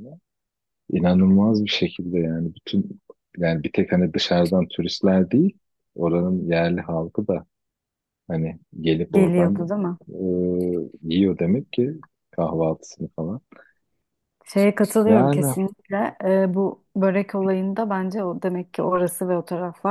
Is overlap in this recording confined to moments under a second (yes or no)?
yes